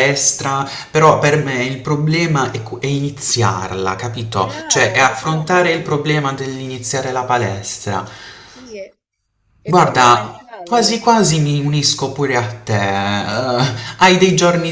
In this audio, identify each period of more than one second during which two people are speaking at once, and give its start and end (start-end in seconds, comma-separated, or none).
4.4-5.8, 9.6-11.1